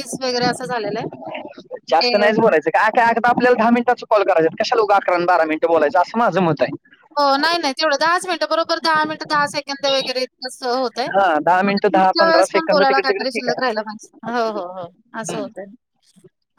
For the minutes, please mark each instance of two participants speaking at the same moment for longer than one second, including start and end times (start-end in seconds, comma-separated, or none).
11.7-13.6